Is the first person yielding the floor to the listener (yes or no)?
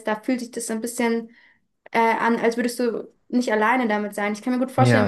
no